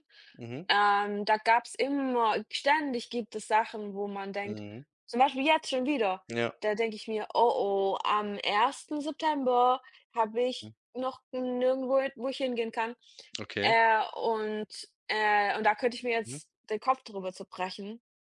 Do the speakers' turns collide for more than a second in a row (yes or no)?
no